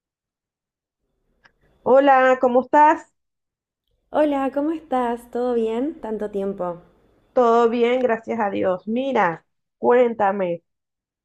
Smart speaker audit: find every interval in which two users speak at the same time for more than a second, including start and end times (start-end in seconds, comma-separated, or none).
none